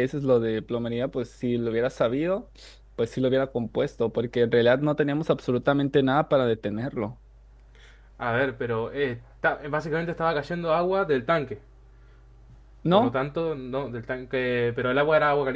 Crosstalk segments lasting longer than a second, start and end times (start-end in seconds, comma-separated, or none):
none